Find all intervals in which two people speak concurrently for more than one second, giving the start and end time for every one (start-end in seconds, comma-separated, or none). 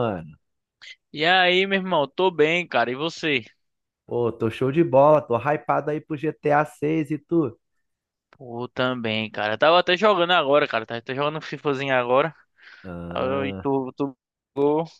none